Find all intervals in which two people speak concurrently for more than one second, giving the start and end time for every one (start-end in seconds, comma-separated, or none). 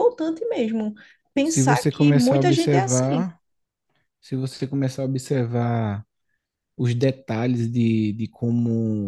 1.4-3.3